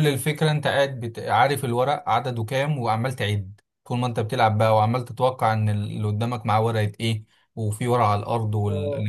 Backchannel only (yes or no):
yes